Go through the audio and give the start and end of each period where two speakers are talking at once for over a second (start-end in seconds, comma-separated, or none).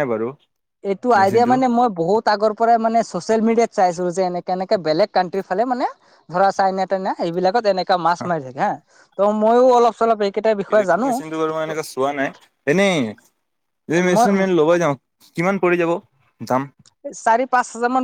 none